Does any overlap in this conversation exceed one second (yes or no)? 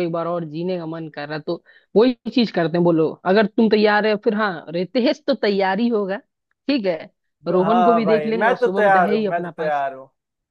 yes